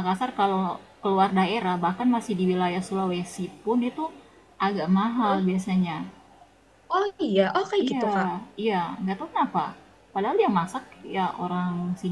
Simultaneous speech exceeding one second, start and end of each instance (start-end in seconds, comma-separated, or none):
none